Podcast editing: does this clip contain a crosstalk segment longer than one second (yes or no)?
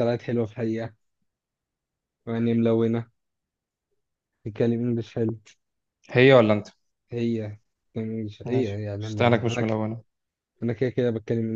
yes